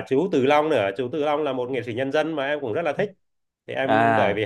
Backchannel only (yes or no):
yes